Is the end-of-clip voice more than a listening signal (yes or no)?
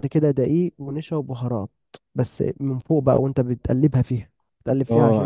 yes